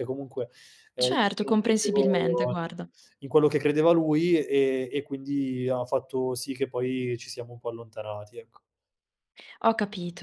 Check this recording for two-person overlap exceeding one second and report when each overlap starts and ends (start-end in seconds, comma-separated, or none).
1.0-2.6